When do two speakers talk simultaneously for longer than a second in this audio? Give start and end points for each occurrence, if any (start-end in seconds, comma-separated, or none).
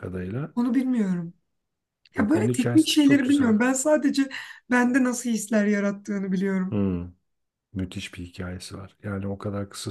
2.2-3.5